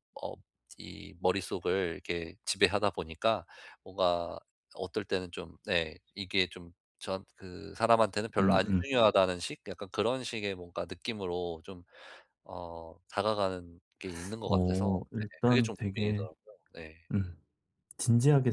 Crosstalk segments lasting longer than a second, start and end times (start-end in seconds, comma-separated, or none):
14.4-16.3